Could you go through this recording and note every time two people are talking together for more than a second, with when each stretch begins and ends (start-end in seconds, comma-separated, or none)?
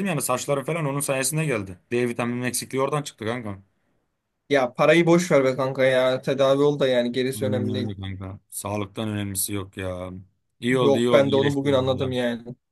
10.8-12.2